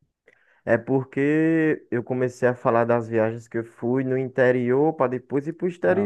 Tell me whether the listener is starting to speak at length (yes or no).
yes